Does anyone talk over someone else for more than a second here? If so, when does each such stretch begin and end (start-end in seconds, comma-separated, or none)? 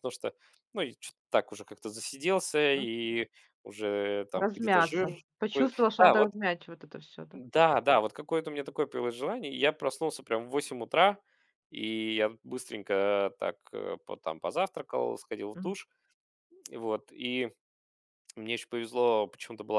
4.3-6.3